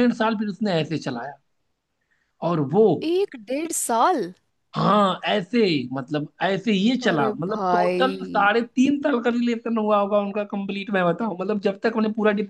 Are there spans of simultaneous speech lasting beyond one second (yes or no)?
yes